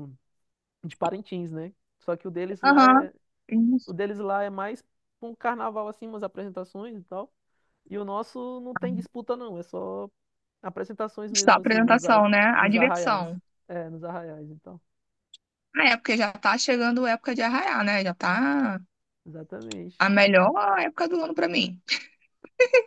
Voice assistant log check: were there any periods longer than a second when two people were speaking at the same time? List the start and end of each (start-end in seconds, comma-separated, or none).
11.4-13.3